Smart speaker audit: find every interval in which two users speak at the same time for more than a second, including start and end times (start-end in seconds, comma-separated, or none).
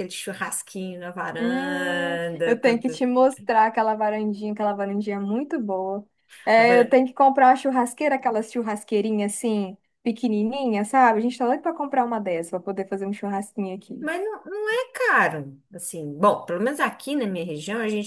1.4-3.0